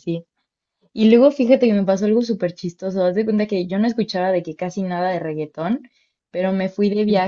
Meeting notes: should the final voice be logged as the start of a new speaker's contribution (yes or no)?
no